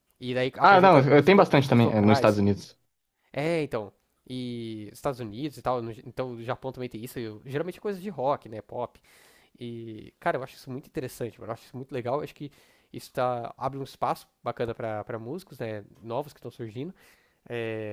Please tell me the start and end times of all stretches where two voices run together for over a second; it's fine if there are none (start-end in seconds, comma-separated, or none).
0.6-2.4